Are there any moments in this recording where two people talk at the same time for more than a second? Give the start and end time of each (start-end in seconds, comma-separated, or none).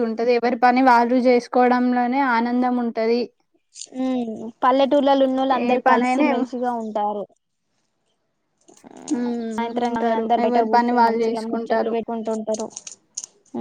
9.5-11.9